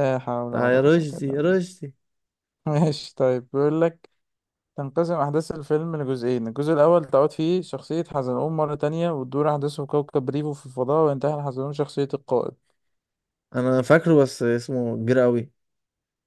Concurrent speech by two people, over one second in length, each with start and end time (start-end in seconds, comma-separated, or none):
0.5-1.7